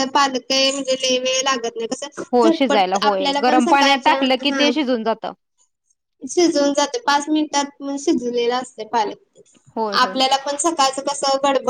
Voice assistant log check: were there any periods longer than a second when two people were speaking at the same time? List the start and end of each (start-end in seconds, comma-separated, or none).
2.4-4.7